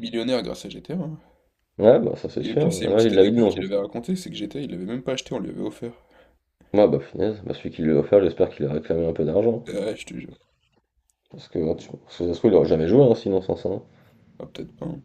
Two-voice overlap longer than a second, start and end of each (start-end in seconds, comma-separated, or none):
2.4-3.6